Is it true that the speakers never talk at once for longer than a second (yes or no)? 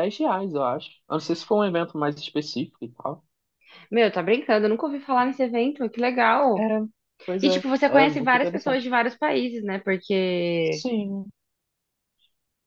no